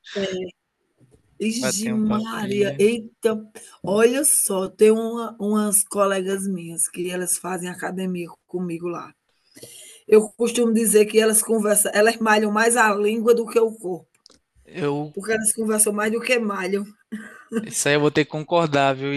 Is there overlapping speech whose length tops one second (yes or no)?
yes